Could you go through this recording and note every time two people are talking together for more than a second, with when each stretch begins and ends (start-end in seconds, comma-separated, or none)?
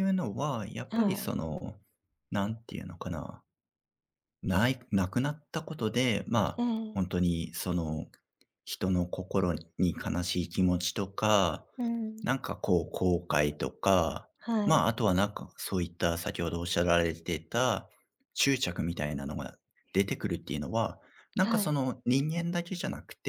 none